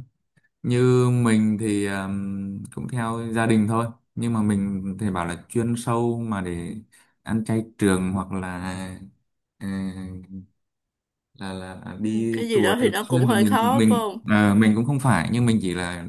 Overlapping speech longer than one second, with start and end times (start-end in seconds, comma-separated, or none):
12.0-14.3